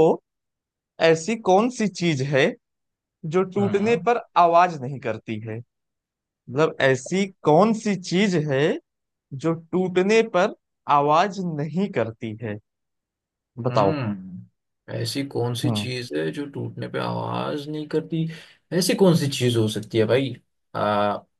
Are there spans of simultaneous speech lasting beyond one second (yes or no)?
no